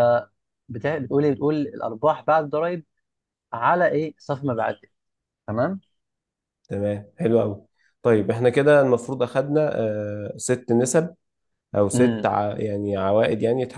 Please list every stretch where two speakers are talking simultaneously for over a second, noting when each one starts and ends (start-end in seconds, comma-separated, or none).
none